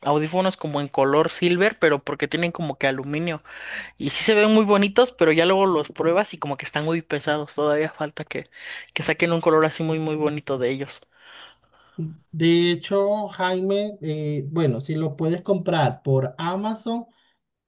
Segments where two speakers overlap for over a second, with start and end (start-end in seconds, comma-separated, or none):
none